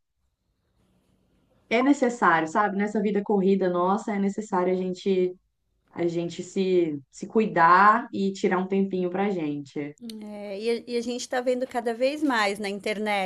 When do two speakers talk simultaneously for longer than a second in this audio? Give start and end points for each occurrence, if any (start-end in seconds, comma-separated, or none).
none